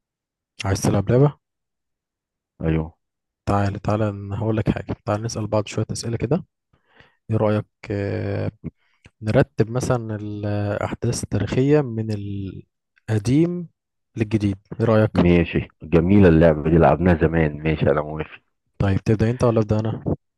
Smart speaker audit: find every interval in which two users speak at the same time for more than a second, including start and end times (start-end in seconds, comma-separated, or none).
none